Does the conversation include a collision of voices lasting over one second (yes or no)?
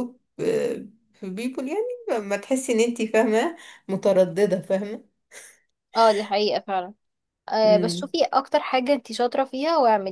no